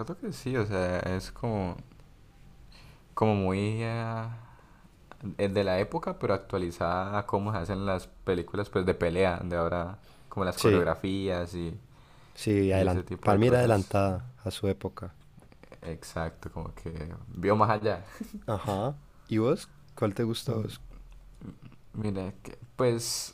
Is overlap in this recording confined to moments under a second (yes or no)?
no